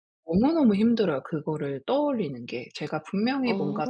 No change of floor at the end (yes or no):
yes